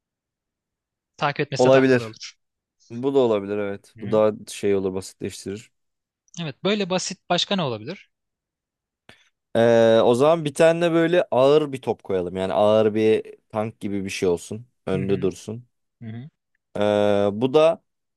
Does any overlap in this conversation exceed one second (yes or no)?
no